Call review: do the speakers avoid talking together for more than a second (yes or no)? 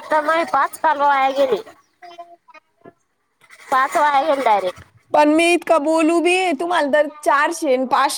yes